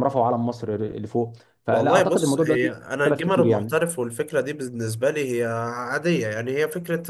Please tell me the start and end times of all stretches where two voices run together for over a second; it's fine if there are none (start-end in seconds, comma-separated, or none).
1.7-3.7